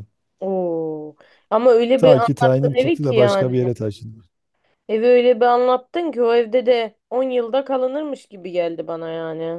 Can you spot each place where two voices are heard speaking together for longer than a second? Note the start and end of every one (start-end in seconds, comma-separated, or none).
2.0-3.5